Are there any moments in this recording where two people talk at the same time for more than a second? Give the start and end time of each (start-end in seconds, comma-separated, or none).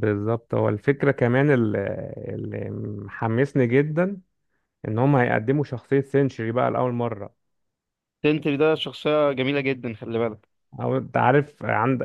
none